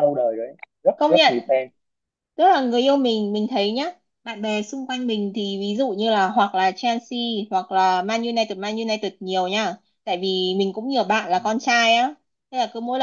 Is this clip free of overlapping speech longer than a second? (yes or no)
yes